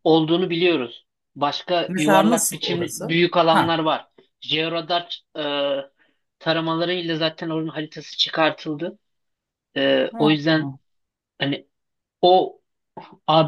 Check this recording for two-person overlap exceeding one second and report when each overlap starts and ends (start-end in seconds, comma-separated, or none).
1.9-3.8